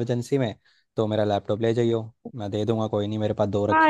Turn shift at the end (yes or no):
yes